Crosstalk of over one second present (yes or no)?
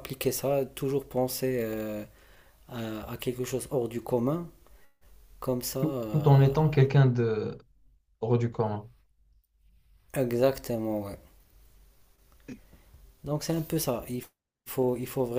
no